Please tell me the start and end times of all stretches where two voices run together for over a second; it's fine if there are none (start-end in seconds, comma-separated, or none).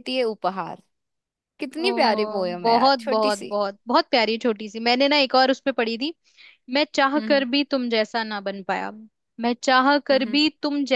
1.9-3.6